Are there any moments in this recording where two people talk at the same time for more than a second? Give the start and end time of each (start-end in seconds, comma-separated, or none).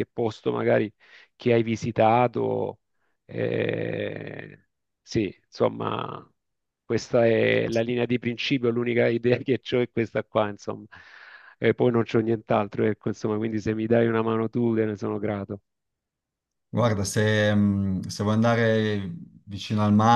none